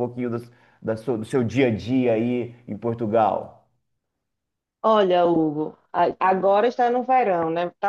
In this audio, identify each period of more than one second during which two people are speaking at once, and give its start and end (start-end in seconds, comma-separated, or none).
none